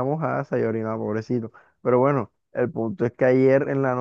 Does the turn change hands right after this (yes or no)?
no